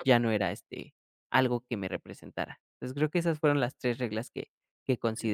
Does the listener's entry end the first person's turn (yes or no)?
yes